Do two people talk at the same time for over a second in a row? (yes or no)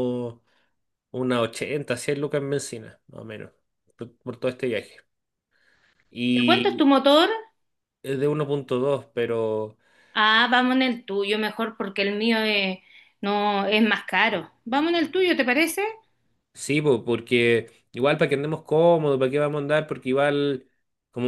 no